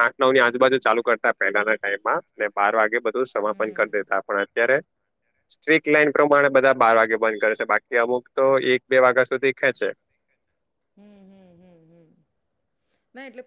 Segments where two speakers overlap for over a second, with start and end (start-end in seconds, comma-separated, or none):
none